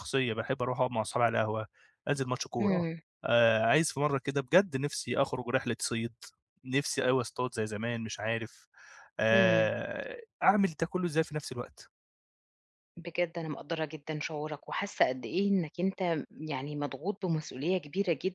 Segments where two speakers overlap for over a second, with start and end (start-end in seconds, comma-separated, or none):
none